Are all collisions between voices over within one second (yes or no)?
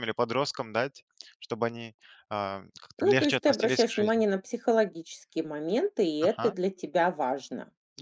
no